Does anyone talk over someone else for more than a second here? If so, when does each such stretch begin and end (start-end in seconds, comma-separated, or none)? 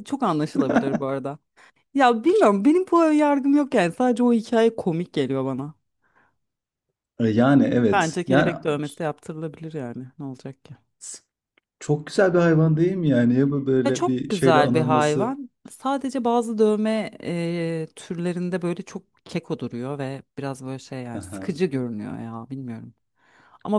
13.9-15.3